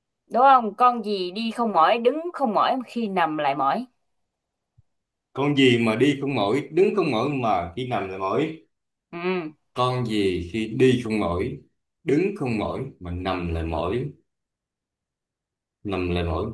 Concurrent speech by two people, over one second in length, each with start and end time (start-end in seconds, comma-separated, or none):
none